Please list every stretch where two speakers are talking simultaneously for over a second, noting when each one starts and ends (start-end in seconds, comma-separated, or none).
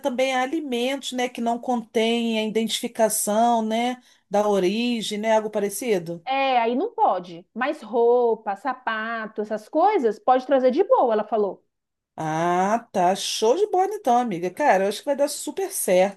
none